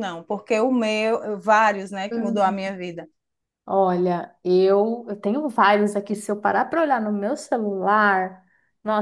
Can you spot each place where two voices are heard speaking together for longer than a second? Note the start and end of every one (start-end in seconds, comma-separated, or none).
none